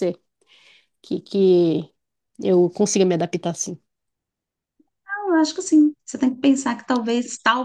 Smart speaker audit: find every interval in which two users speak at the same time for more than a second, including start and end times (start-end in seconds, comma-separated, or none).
none